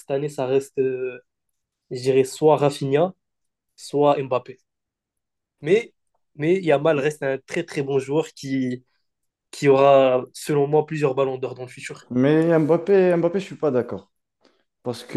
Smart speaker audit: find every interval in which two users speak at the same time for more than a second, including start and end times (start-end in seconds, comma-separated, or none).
none